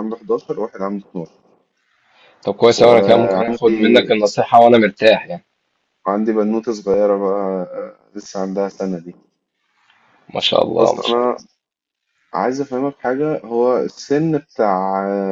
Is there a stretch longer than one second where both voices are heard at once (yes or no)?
yes